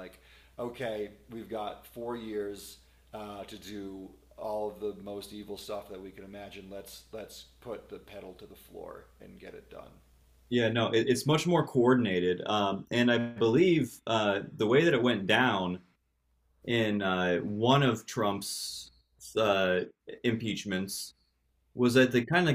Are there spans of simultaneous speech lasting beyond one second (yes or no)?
no